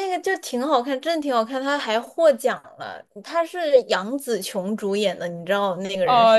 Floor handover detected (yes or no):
yes